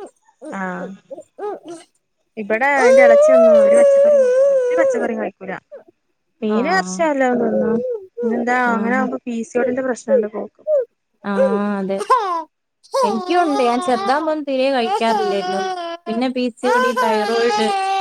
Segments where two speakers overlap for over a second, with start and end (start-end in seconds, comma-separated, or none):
none